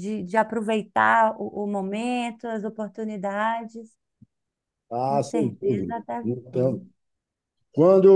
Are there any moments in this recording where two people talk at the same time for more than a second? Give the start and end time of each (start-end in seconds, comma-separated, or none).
5.1-6.8